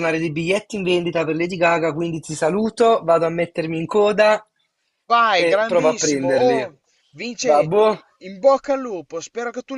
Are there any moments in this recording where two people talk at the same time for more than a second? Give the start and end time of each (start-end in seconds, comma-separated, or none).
5.4-6.7